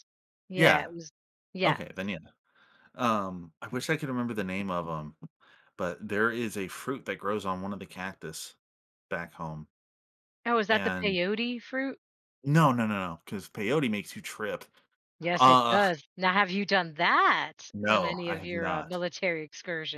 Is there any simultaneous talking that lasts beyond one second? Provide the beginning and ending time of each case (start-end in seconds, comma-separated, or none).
17.7-19.0